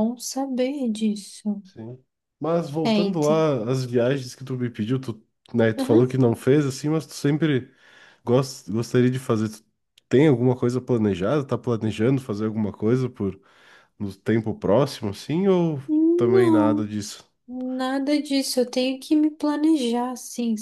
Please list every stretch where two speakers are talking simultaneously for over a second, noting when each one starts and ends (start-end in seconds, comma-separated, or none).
none